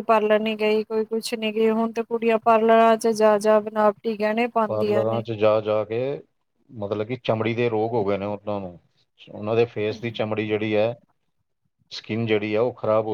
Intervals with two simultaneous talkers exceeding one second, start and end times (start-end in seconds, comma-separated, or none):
none